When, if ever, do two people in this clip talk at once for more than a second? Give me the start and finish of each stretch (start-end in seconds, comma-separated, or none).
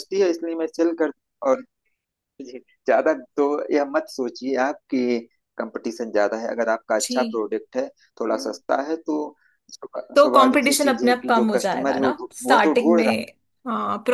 10.2-13.2